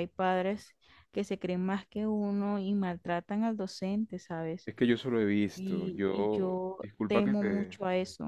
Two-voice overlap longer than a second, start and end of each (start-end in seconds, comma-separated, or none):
5.5-7.8